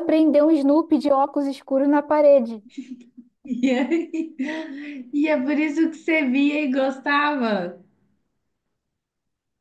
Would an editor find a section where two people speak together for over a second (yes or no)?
no